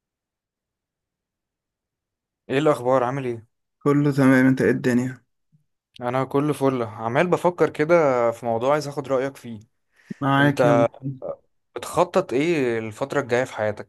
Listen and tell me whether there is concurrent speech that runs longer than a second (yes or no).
no